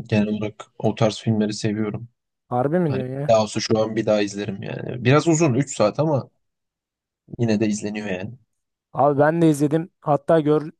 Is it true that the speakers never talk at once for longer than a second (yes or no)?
yes